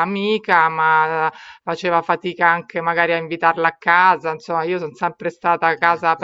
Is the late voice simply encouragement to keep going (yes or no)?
yes